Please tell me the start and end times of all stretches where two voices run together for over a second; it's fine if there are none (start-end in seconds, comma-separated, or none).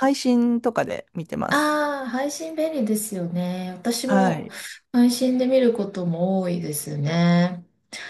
none